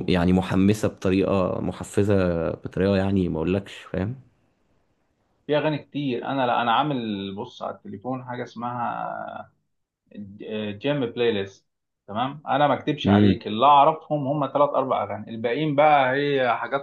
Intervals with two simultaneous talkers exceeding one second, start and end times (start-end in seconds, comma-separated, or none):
none